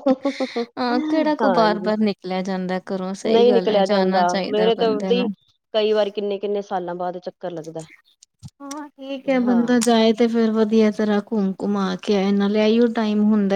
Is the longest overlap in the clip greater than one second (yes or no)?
yes